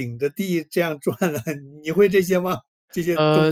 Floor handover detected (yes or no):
yes